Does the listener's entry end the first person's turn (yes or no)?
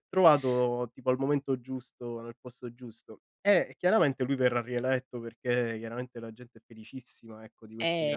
no